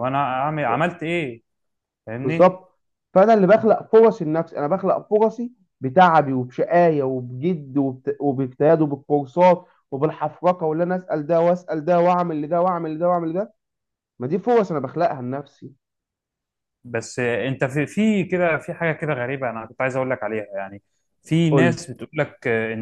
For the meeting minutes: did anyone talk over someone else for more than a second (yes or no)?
no